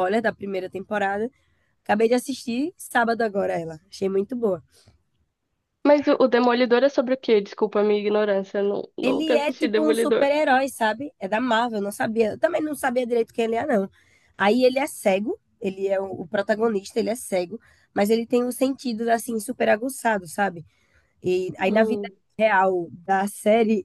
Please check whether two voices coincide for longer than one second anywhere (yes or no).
yes